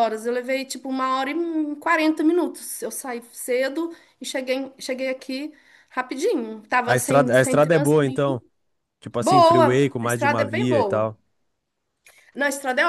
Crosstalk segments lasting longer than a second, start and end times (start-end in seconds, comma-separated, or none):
6.8-8.4, 9.2-11.1